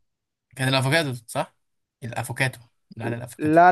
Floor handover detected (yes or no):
yes